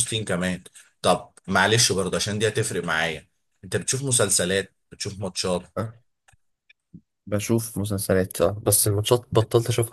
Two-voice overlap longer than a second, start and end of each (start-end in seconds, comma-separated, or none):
none